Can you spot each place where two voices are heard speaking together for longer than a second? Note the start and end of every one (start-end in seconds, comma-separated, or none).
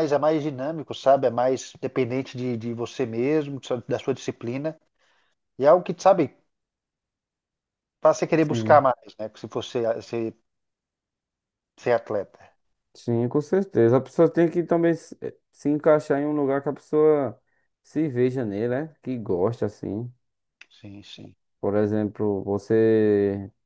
none